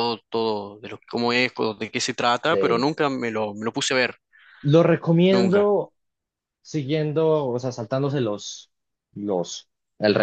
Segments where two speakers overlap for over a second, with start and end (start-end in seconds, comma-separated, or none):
none